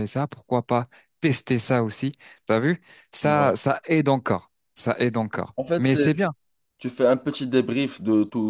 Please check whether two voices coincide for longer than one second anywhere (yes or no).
no